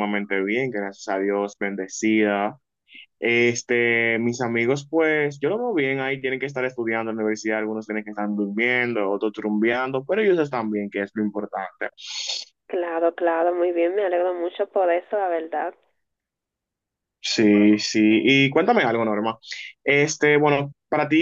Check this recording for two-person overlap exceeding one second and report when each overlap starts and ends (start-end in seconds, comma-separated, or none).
none